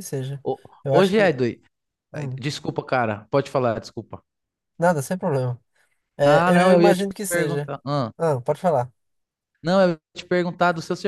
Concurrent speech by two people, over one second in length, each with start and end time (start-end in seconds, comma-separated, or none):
6.2-7.7